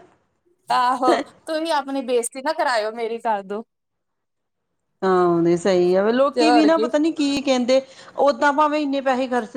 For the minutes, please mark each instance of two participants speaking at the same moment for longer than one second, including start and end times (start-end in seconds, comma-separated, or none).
none